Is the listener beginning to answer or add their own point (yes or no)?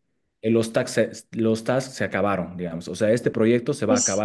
no